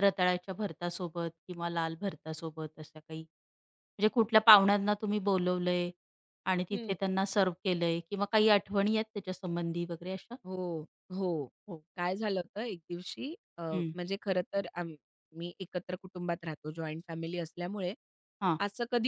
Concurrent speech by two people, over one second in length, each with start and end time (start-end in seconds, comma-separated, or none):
none